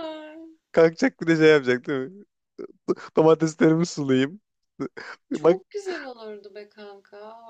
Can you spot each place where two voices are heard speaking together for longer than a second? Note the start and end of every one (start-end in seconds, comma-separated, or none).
none